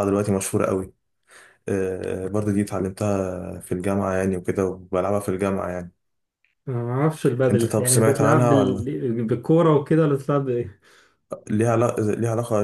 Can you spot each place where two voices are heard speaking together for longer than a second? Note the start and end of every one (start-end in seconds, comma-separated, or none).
7.5-8.8